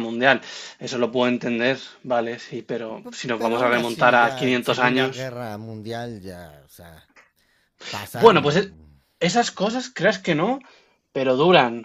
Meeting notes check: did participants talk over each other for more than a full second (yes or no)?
yes